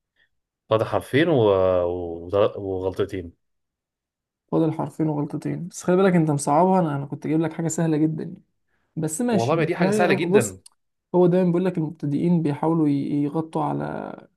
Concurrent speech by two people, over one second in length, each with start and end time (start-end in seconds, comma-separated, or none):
9.3-10.6